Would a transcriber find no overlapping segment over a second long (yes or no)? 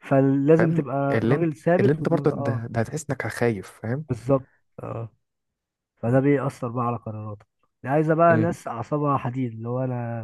no